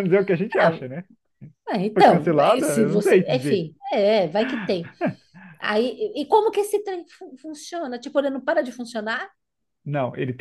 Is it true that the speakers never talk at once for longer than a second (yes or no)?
no